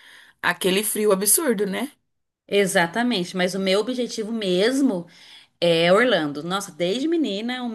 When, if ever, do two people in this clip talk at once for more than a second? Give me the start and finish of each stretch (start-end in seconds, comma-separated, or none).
none